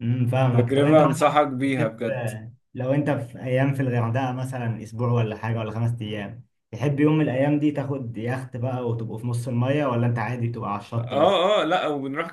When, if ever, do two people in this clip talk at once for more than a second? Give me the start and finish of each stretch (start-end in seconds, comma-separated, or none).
0.5-1.9